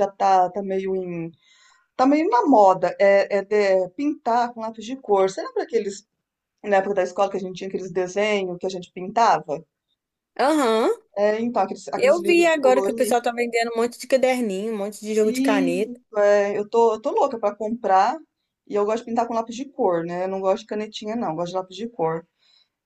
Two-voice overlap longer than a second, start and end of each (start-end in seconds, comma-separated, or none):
12.0-13.2